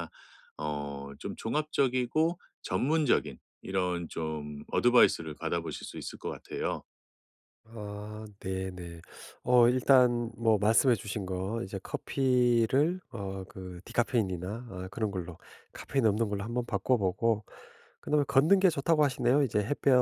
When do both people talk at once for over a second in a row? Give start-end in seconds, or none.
none